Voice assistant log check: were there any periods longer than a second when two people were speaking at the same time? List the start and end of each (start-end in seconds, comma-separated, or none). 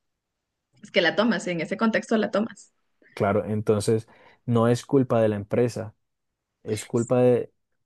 none